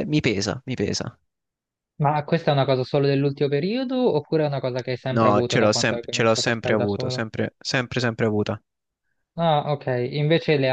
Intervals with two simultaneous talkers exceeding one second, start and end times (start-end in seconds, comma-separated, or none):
5.2-7.2